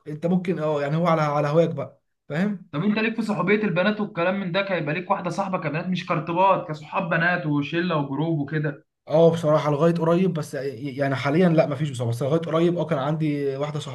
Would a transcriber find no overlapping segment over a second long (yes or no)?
yes